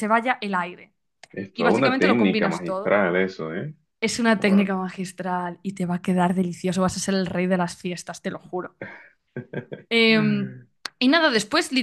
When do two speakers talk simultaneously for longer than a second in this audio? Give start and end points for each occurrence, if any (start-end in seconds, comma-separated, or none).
1.6-3.0